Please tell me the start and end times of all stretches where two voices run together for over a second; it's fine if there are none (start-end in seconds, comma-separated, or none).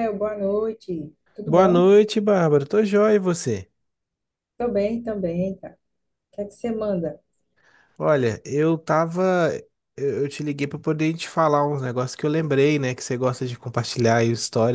none